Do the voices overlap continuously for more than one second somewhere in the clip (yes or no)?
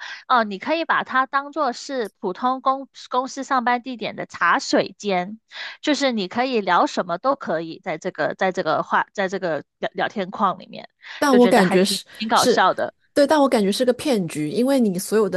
yes